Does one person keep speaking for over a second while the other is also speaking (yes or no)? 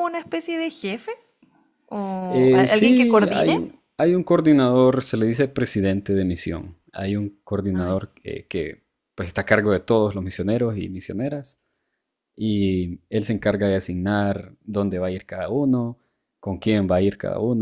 yes